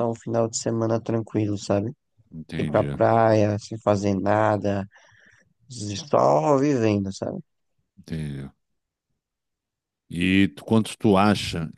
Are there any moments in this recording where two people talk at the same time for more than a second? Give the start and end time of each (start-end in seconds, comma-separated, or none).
none